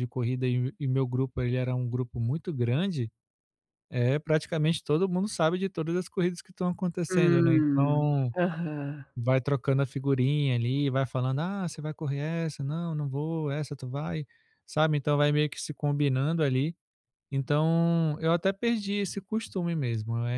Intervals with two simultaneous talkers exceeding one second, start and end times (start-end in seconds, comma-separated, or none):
7.1-8.3